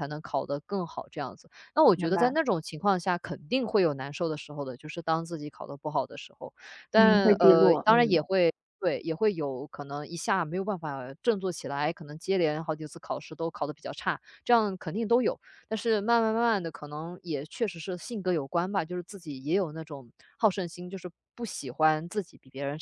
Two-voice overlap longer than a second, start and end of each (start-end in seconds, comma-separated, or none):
6.9-8.2